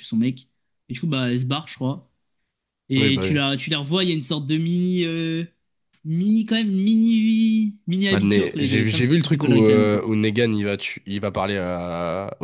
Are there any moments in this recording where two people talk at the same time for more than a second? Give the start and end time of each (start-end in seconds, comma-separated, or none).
8.1-10.0